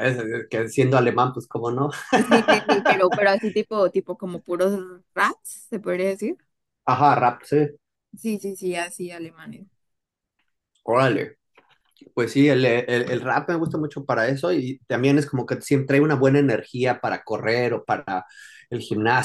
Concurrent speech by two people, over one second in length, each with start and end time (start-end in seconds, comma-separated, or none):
none